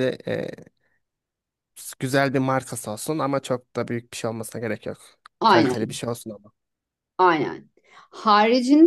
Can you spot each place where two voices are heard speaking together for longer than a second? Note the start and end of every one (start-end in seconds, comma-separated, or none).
none